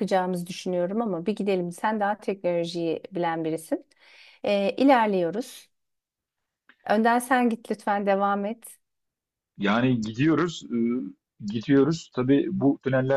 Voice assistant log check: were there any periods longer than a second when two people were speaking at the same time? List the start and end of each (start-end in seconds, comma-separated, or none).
none